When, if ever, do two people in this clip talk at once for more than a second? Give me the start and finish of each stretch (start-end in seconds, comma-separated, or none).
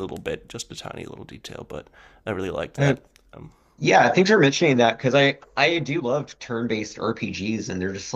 none